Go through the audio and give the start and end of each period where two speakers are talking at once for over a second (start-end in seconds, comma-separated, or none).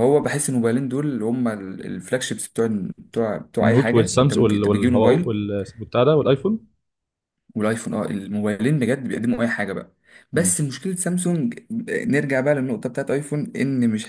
3.6-5.3